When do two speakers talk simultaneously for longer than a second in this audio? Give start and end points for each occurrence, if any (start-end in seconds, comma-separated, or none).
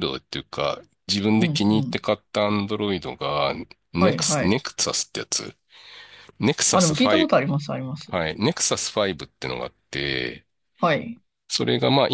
6.7-8.1